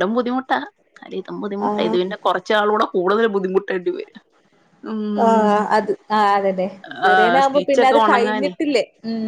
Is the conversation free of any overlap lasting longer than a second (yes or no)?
no